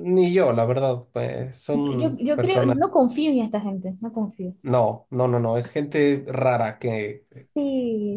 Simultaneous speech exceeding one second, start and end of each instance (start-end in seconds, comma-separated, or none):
1.7-3.0